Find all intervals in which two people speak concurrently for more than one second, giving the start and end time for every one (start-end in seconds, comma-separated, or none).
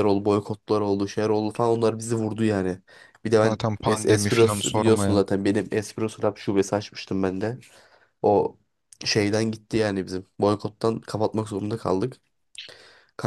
3.4-5.2